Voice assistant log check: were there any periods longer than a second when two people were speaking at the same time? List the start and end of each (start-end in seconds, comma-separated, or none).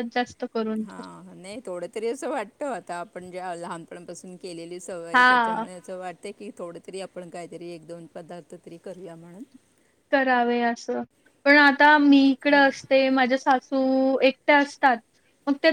none